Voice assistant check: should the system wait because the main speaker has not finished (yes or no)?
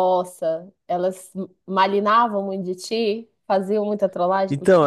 no